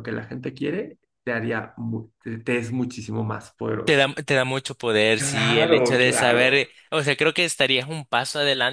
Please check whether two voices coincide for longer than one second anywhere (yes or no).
yes